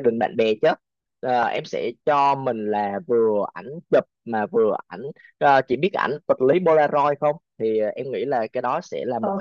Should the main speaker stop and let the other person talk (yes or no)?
yes